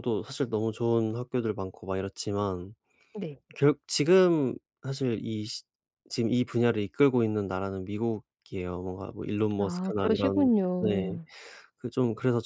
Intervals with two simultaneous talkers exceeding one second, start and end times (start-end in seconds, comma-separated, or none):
9.6-11.1